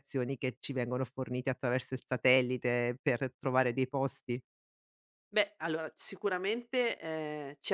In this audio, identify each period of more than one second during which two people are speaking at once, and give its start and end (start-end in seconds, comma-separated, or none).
none